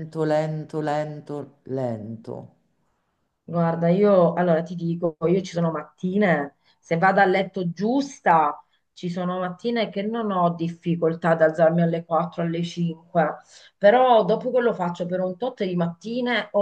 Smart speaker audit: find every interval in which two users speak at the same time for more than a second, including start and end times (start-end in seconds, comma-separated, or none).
none